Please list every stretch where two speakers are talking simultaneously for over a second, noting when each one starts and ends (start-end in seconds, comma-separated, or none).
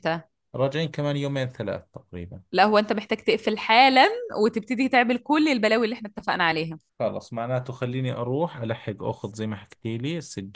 none